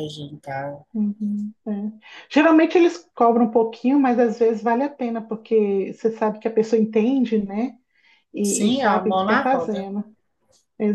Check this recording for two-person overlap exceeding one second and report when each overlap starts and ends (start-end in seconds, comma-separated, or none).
8.4-9.9